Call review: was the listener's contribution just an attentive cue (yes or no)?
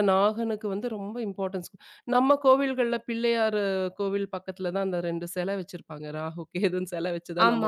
no